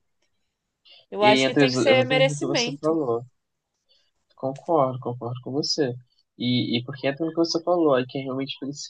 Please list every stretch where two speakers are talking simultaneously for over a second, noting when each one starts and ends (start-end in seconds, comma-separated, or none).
1.2-3.0